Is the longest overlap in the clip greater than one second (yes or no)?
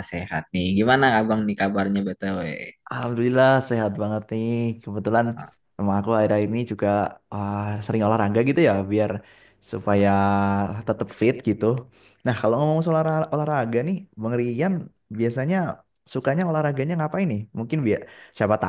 no